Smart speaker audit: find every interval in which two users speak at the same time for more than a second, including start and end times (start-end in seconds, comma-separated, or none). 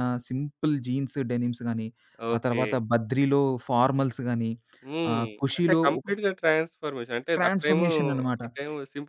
none